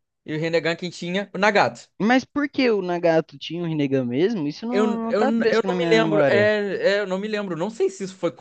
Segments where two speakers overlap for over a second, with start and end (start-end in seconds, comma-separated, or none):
4.7-6.5